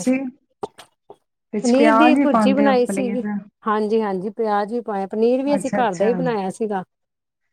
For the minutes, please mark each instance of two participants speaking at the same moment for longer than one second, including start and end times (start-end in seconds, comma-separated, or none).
1.5-3.2